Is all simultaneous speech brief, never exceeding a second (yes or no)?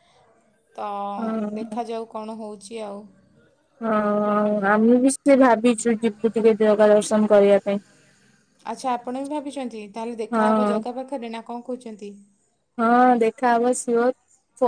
yes